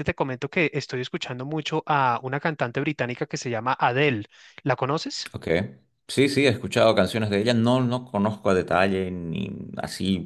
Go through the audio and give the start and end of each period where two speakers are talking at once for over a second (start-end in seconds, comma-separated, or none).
none